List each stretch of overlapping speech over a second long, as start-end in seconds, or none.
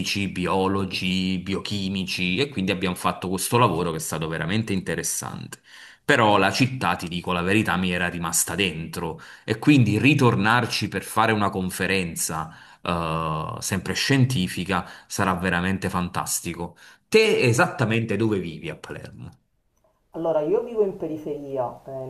none